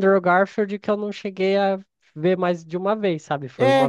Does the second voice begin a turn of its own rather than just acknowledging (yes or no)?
yes